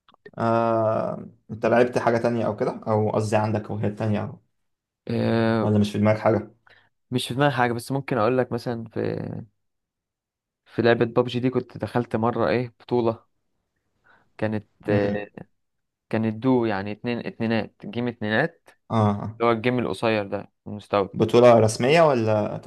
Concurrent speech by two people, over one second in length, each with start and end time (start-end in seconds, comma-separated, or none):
none